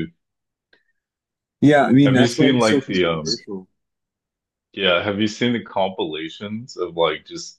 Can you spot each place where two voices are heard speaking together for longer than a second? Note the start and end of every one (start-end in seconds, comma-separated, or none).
2.0-3.2